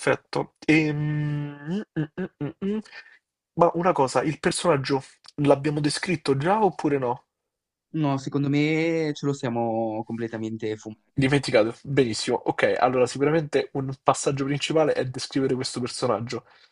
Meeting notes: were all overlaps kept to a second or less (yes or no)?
yes